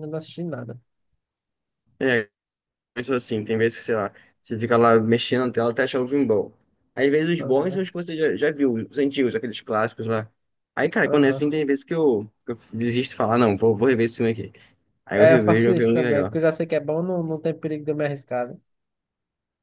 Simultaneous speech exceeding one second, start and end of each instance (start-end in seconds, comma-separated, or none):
15.1-16.4